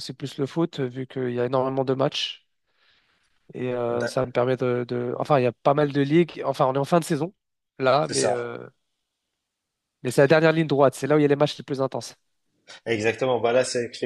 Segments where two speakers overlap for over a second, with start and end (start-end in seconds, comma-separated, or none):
none